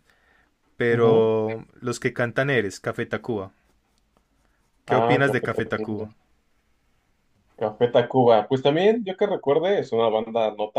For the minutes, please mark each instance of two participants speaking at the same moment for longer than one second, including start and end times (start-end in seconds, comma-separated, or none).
4.8-6.1